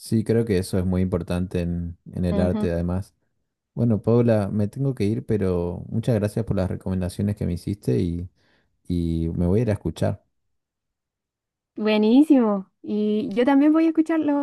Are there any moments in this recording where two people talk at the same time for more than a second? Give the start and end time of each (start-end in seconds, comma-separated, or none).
none